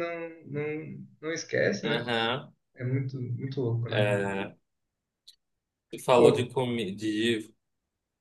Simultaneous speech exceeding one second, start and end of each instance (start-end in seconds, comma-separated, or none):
none